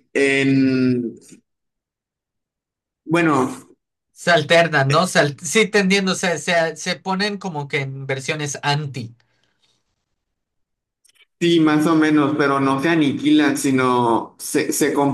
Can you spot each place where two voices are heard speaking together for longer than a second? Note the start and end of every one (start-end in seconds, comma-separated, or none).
none